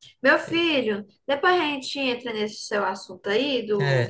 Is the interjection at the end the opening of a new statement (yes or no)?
yes